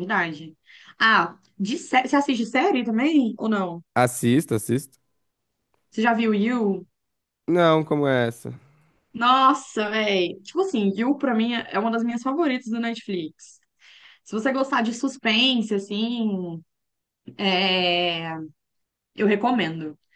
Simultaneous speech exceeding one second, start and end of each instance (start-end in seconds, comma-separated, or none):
none